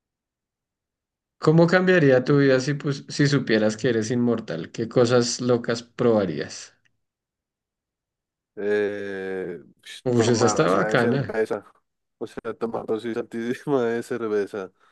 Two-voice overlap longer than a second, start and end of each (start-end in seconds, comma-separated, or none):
10.1-11.4